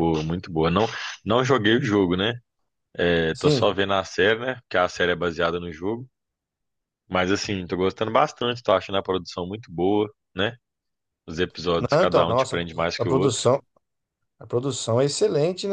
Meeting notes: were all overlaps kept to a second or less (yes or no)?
no